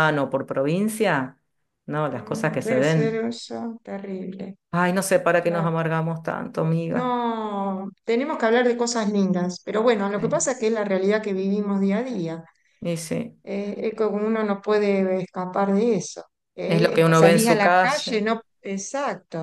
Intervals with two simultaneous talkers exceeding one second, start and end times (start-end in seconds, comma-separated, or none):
2.1-3.3, 16.6-18.2